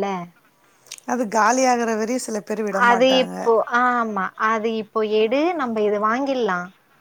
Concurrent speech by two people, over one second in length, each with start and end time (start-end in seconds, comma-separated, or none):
none